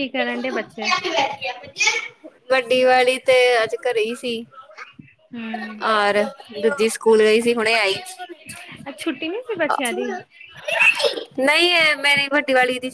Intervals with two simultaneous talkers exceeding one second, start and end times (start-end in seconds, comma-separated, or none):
none